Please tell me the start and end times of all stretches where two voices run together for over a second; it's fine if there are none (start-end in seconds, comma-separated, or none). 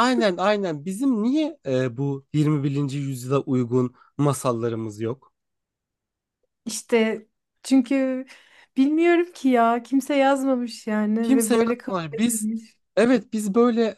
11.2-12.5